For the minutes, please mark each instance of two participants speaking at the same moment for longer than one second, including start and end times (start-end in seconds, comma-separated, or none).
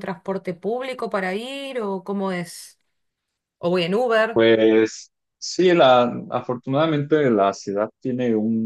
none